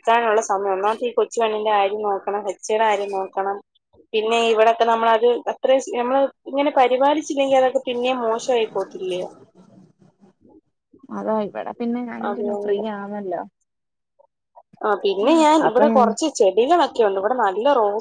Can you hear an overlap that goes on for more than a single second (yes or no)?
no